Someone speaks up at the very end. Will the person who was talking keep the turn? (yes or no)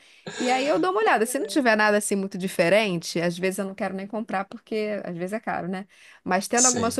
yes